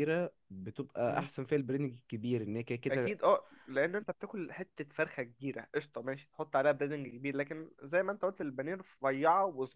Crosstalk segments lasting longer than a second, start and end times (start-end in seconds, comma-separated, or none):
none